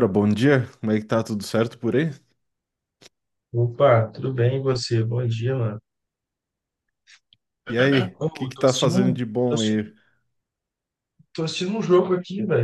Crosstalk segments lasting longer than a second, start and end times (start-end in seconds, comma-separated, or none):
8.2-9.9